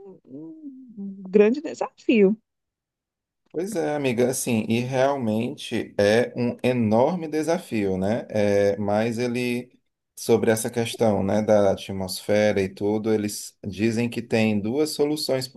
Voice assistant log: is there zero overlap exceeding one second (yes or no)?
yes